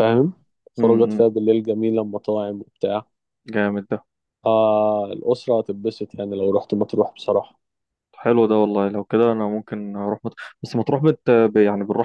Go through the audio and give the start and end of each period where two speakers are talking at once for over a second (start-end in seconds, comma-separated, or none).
none